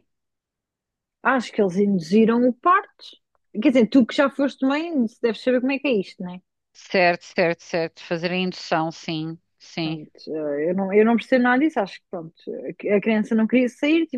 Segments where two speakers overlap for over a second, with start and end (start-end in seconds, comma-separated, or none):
none